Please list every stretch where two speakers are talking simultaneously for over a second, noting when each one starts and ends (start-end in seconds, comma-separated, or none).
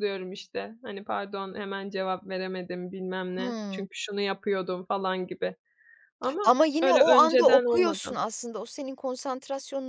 6.4-8.2